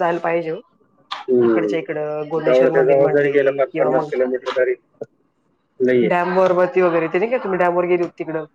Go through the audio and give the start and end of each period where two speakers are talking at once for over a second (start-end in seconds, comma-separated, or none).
2.5-4.1